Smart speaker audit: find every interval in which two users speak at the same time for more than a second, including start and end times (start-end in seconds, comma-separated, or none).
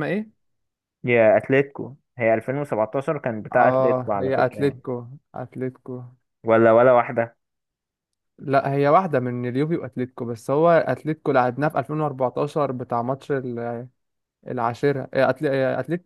3.5-4.8